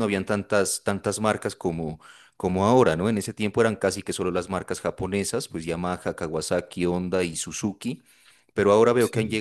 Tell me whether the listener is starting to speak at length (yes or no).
no